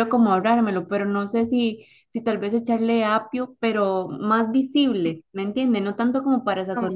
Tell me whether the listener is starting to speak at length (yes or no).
no